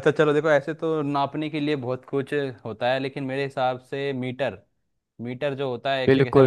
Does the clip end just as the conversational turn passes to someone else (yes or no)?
yes